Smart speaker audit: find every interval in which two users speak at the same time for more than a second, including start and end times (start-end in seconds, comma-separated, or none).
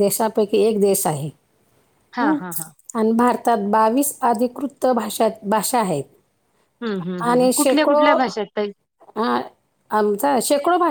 none